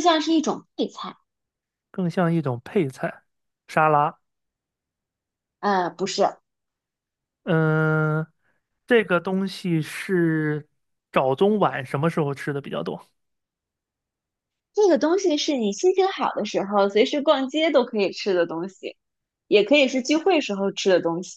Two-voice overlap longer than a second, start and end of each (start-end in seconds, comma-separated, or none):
none